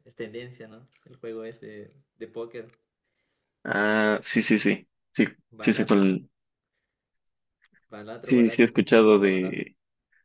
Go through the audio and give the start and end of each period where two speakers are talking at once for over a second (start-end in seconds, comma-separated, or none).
8.2-9.7